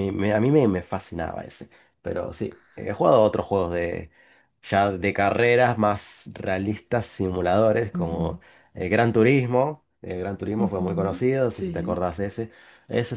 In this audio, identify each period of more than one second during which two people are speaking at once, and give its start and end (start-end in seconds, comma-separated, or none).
10.6-12.1